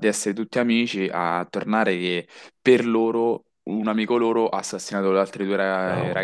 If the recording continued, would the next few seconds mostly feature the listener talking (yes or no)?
yes